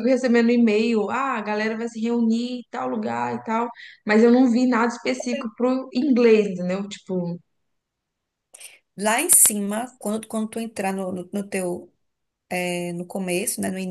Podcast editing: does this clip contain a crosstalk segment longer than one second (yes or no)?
no